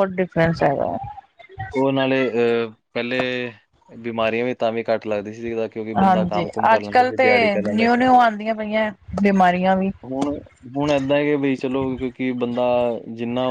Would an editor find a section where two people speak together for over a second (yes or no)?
yes